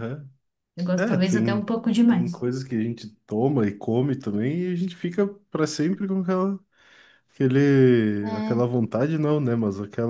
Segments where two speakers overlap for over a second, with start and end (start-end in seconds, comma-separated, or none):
0.9-2.4